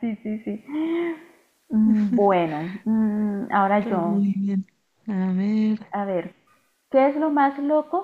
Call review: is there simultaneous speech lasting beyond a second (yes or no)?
no